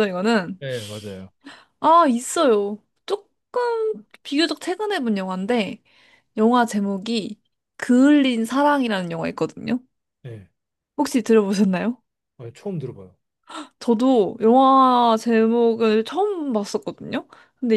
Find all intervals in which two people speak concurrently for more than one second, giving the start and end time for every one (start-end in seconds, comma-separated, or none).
none